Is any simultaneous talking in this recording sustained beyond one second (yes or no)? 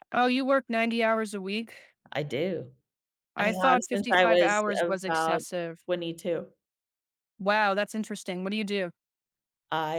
yes